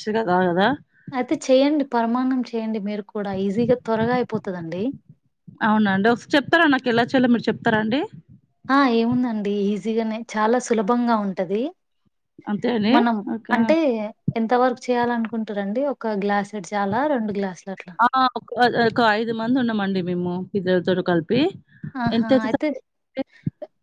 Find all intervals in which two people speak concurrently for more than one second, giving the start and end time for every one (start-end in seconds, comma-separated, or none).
none